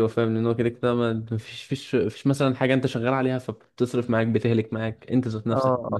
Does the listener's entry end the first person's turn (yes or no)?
yes